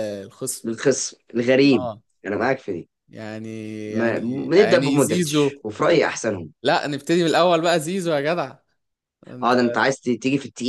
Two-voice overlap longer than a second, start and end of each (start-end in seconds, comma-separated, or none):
3.9-5.6